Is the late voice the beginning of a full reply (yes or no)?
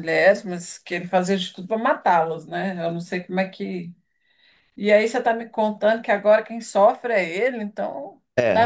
yes